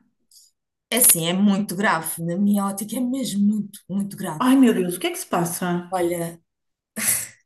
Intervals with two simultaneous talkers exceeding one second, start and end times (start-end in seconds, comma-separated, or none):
none